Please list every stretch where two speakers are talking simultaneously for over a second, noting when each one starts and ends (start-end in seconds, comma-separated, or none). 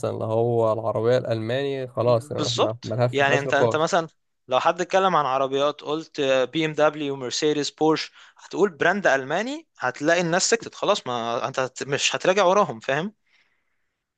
2.4-3.9